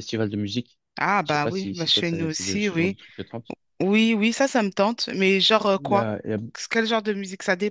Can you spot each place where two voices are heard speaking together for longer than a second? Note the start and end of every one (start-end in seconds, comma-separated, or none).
1.2-3.0